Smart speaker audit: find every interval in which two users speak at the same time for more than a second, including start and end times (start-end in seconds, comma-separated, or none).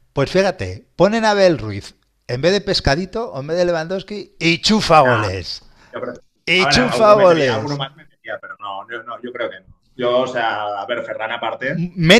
6.6-7.8